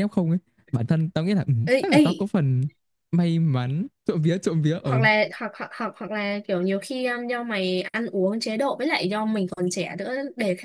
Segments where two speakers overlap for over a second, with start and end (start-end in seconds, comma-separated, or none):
none